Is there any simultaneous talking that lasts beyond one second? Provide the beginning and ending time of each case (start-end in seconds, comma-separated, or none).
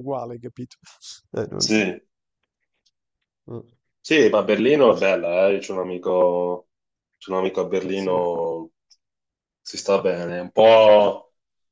none